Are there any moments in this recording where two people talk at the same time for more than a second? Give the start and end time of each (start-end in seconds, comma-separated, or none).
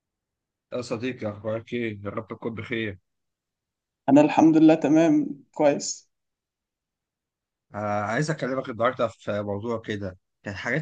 none